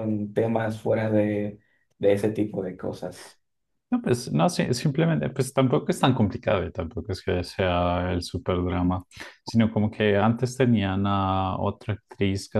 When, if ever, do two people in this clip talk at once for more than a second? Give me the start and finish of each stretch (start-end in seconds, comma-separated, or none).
none